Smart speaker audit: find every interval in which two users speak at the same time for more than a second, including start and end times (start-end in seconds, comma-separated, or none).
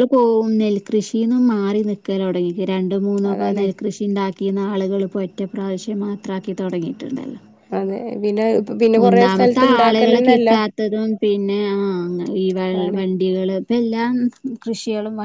9.0-10.5